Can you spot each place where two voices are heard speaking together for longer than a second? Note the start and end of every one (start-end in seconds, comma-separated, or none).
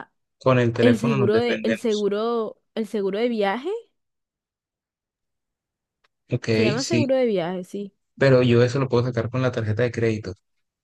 0.8-2.1